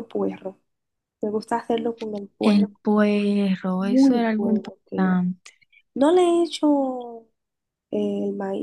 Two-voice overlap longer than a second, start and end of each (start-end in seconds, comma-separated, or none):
3.8-5.2